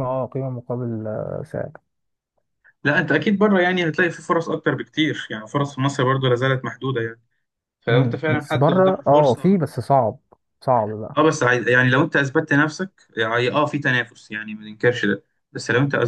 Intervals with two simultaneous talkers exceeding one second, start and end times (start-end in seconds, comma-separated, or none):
7.9-9.6